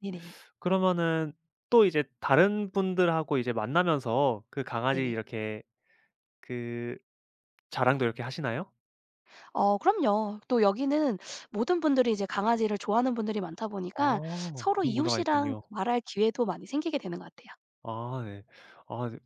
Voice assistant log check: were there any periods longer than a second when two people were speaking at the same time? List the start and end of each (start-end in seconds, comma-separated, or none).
13.9-15.6